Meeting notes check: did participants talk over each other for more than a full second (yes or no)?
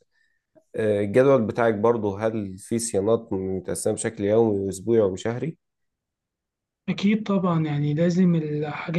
no